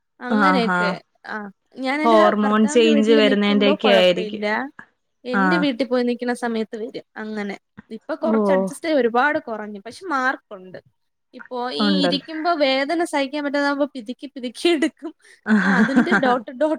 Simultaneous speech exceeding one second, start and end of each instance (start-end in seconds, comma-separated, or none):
2.0-4.5